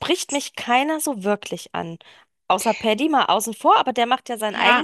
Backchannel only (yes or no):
no